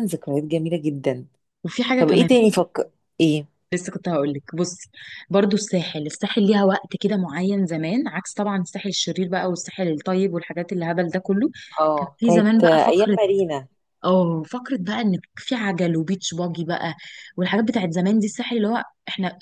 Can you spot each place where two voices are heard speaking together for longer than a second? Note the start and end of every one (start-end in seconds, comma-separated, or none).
12.0-13.2